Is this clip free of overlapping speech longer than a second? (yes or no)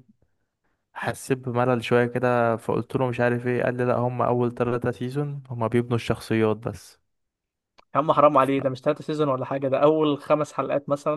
yes